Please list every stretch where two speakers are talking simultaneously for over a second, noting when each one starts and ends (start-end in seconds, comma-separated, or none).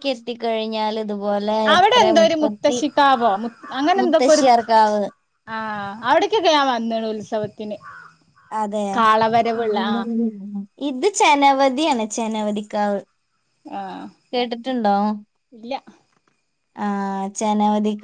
none